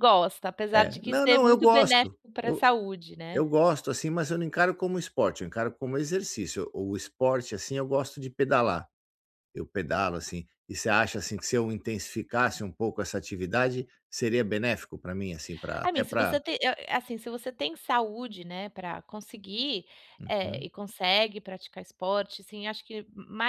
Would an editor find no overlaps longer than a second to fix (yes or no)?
no